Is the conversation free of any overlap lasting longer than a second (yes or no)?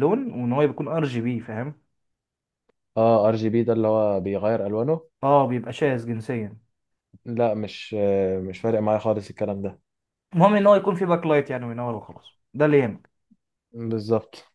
yes